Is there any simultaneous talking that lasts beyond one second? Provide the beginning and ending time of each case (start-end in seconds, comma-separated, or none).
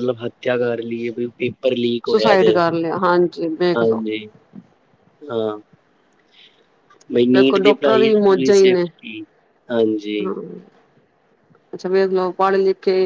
7.3-8.8